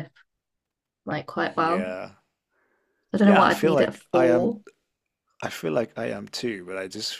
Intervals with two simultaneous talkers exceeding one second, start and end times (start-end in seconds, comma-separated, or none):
3.2-4.5